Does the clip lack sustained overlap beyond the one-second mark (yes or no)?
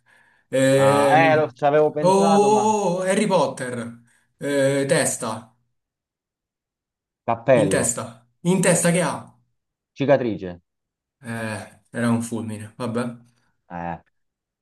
no